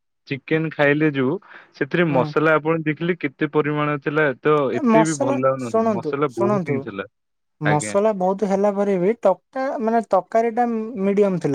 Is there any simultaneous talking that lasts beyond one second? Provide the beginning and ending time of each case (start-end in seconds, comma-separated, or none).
4.9-6.8